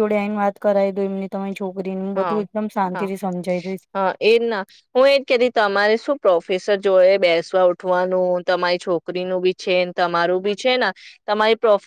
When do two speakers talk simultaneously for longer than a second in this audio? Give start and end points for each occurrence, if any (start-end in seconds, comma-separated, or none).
none